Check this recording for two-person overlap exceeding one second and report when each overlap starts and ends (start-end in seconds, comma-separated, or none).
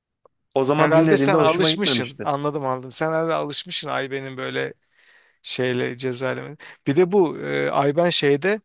0.7-2.3